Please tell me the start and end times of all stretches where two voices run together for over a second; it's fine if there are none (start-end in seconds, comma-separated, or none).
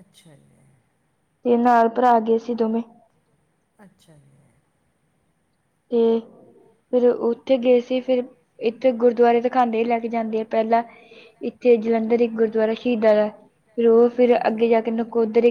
none